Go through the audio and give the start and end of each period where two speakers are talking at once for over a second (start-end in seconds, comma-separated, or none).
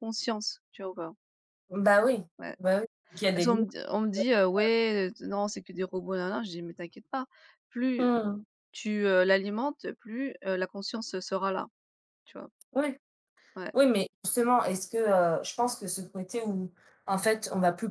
none